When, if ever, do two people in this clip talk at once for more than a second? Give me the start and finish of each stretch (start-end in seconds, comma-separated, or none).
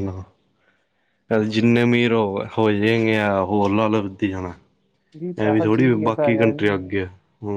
5.4-6.7